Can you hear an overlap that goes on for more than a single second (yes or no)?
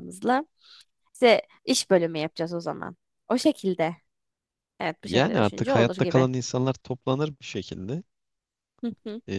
yes